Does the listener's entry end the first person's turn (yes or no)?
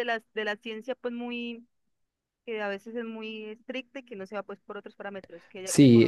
yes